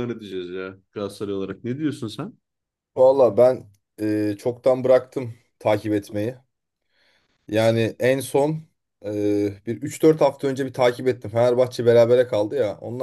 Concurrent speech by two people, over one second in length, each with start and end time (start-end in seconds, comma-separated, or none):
none